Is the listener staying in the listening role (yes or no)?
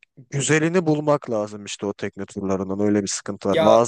yes